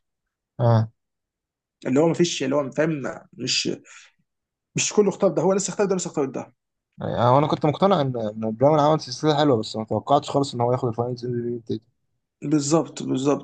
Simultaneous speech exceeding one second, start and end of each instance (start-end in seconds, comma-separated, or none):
none